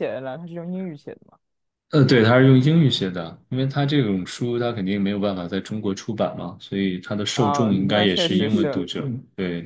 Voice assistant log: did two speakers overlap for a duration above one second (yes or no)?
yes